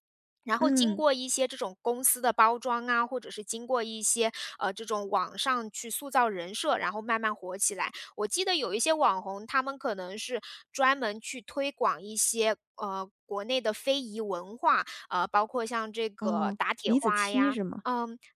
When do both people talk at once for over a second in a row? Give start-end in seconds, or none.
16.2-17.8